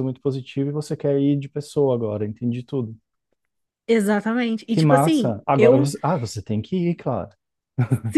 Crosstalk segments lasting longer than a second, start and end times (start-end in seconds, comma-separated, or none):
4.7-5.9